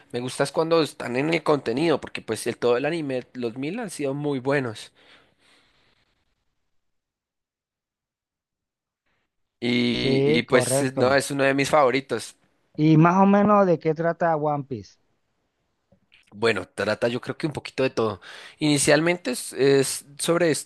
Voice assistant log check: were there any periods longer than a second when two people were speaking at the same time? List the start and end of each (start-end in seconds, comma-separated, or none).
9.9-11.1